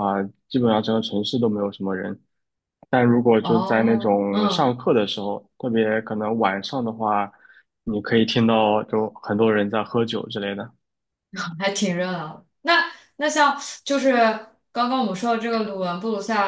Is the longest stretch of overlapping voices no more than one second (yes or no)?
no